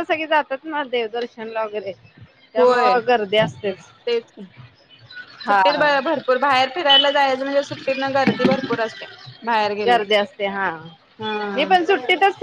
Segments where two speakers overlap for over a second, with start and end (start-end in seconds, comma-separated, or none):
none